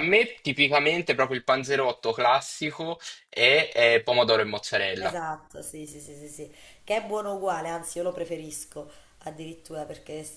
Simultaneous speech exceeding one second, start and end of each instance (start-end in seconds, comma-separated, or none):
none